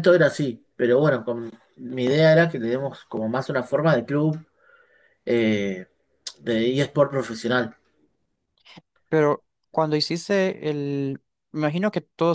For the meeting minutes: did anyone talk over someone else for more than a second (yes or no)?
no